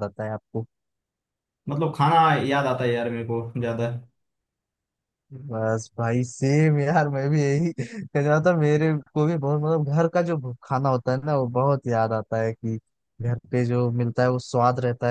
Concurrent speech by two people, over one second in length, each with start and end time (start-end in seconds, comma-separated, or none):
none